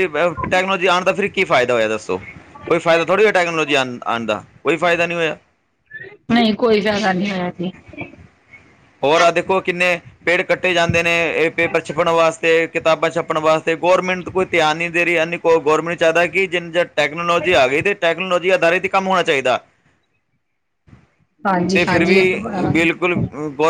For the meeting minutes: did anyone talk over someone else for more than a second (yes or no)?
no